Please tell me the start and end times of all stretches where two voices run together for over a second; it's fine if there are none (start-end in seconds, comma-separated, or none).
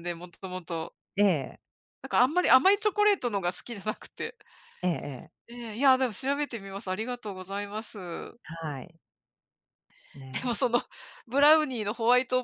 none